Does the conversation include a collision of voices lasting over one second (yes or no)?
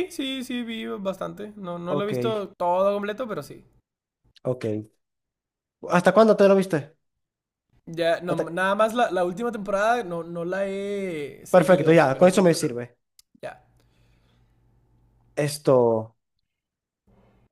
yes